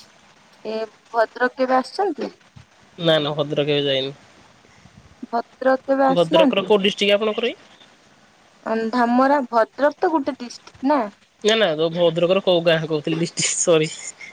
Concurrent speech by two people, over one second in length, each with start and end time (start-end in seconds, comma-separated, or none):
6.2-7.5